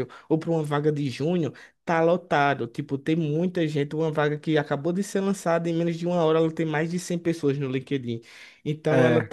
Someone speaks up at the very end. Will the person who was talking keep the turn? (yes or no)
yes